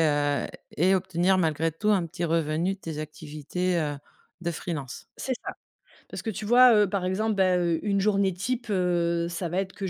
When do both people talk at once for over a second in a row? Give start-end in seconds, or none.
none